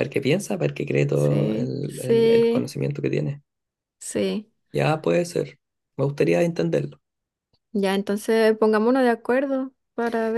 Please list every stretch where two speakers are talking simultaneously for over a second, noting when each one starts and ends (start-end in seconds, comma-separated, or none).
1.1-2.7